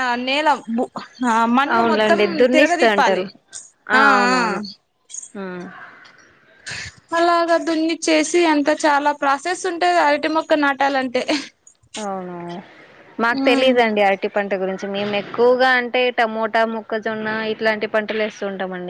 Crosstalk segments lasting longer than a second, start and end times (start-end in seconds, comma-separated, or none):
1.8-3.2